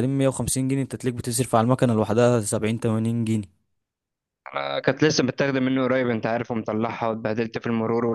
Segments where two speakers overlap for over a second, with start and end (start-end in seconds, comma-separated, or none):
none